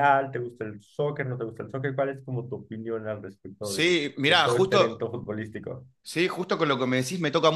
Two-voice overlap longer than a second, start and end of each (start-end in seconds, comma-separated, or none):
3.6-5.1